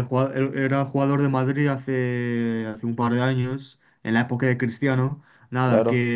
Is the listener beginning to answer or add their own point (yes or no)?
no